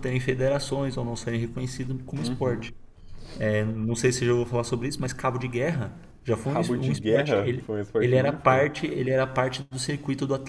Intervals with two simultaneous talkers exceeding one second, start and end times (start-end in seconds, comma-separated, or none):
6.4-8.6